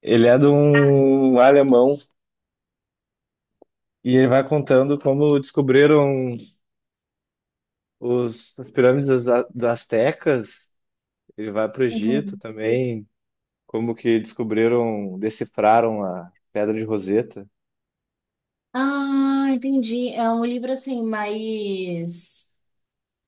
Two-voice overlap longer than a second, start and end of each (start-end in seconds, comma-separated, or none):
none